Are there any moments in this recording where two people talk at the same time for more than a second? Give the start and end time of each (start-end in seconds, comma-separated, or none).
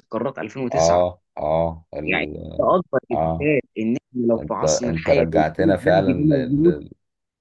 4.4-6.7